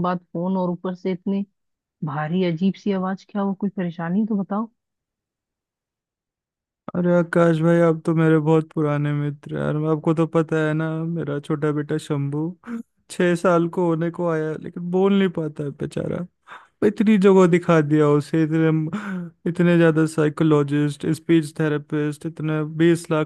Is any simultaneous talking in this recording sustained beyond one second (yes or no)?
no